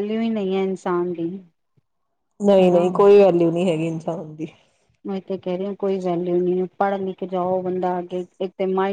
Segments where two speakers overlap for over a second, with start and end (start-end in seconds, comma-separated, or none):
none